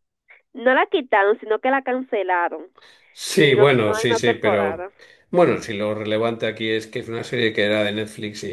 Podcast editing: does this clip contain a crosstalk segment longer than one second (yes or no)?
yes